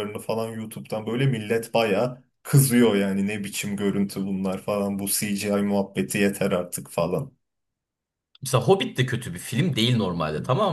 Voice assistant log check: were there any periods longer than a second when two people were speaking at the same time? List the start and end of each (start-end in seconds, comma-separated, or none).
none